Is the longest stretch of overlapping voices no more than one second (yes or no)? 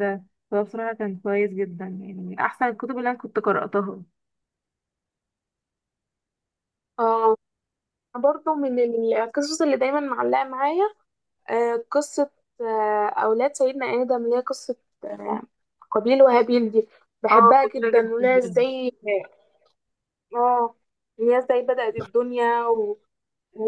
no